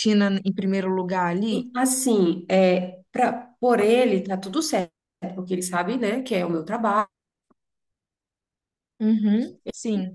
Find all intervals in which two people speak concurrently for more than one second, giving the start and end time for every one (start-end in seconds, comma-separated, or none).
none